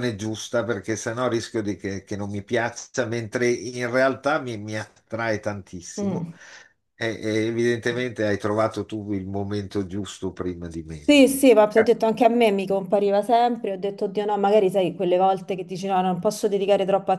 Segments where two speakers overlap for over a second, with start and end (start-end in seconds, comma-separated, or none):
none